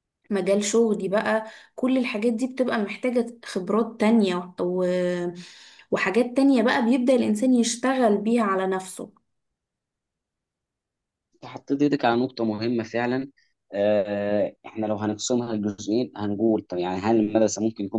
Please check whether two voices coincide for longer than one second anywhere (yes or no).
no